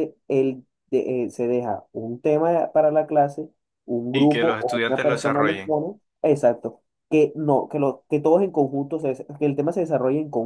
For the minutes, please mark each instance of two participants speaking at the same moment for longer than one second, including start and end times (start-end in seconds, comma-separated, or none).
4.1-5.7